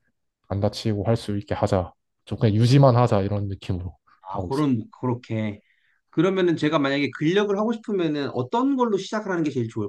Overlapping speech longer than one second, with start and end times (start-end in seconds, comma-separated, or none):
none